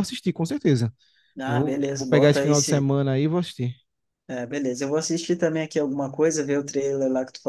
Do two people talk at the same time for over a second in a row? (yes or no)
yes